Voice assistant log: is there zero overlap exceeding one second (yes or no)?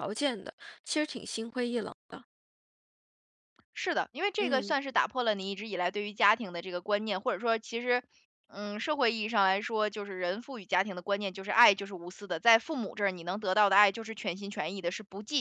yes